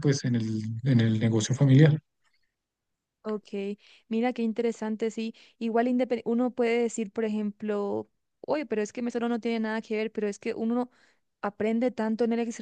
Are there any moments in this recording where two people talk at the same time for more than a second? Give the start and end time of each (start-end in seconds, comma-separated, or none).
none